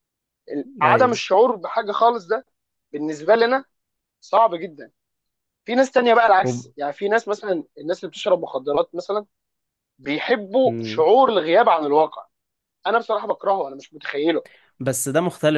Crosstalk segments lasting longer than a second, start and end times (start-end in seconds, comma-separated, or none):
none